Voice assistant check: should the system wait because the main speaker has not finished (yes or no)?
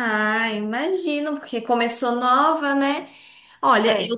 yes